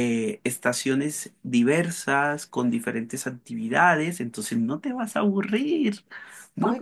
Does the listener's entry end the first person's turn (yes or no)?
yes